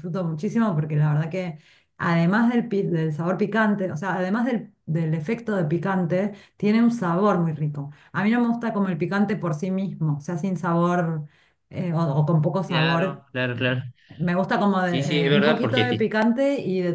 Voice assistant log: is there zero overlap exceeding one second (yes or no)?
no